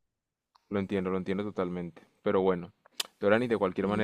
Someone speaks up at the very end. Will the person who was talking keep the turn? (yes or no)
yes